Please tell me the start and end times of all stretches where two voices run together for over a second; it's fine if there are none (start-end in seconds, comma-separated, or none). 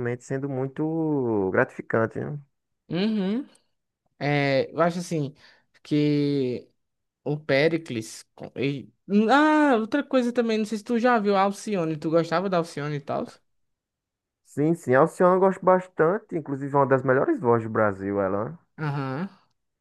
none